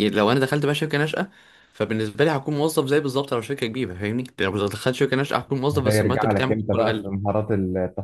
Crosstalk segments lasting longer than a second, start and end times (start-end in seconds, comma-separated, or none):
5.7-7.1